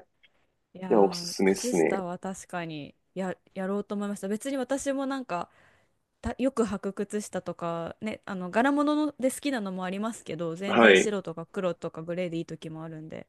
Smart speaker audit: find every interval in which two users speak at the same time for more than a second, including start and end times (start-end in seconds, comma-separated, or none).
0.7-2.0